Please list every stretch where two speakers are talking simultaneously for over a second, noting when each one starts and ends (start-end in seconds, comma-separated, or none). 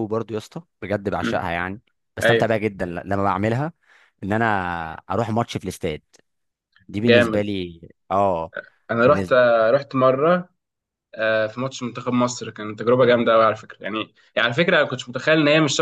none